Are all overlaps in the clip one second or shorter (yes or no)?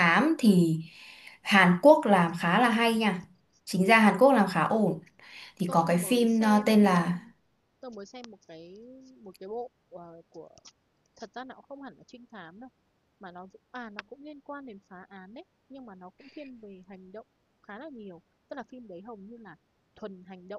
no